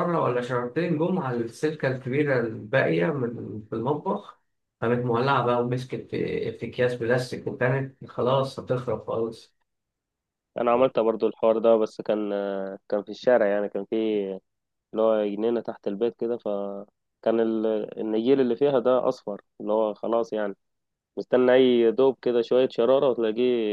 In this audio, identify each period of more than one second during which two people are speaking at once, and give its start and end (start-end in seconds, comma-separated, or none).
none